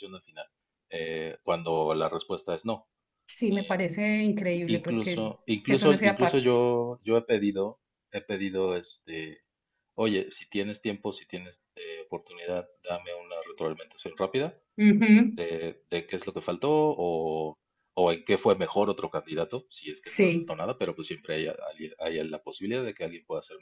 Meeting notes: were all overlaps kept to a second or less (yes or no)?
no